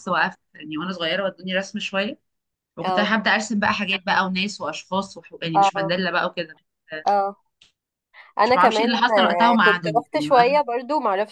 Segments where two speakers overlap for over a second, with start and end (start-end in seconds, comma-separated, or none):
8.4-10.6